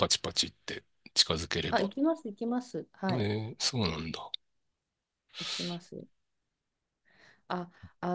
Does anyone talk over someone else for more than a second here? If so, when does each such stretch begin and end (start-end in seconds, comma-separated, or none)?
none